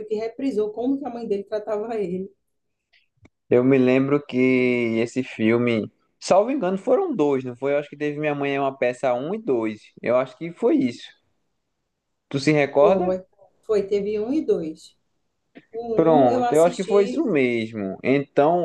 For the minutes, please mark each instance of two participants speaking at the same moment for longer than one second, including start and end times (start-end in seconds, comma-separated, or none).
15.9-17.3